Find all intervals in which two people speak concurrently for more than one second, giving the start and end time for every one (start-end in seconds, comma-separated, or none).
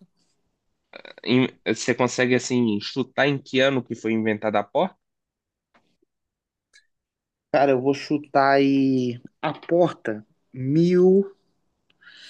none